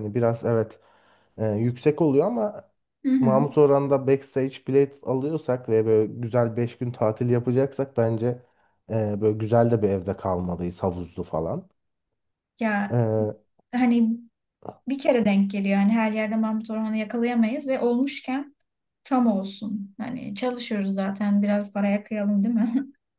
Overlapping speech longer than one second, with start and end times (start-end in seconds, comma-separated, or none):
none